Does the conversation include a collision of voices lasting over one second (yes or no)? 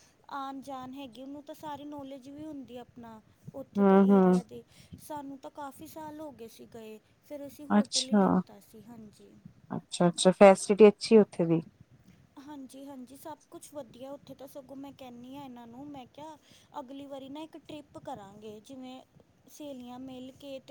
no